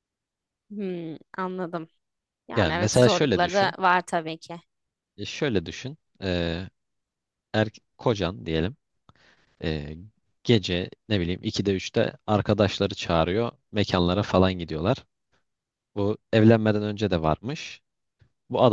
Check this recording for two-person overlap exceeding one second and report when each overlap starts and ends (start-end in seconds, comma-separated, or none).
2.6-3.8